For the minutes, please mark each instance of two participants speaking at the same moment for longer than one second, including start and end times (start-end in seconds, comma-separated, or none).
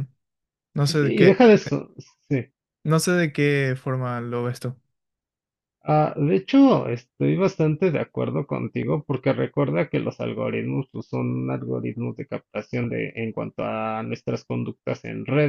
none